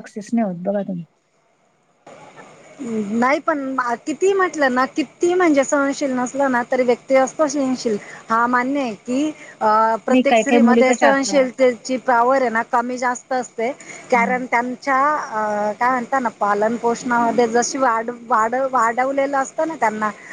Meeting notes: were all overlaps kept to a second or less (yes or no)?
no